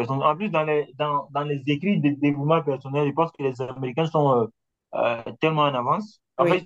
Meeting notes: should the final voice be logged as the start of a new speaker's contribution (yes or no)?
no